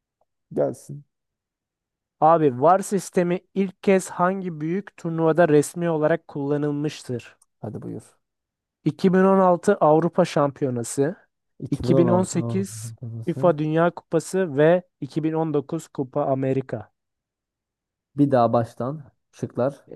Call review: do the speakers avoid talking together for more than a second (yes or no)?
no